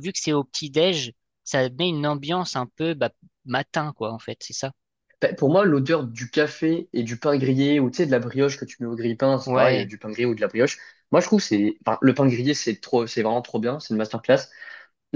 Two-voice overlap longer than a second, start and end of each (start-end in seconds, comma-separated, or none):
none